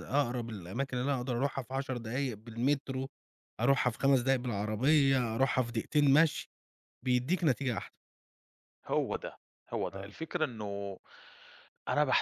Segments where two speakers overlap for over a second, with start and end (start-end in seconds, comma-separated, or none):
none